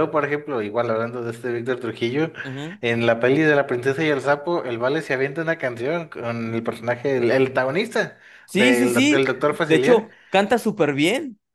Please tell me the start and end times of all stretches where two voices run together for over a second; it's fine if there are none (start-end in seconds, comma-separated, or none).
8.5-10.1